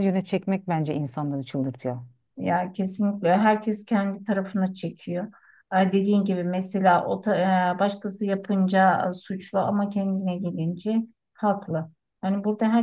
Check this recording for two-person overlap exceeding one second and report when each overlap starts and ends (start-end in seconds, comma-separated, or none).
none